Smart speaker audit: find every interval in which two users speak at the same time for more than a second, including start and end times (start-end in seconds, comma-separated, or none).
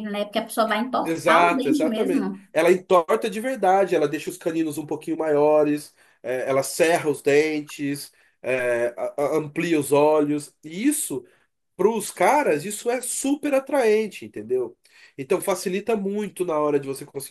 1.0-2.5